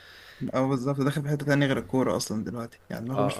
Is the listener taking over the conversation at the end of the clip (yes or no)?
yes